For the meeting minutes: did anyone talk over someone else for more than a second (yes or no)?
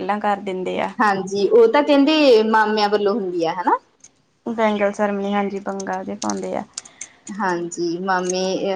no